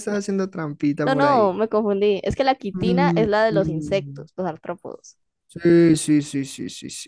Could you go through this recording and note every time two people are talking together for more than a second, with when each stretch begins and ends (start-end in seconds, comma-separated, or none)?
2.7-4.3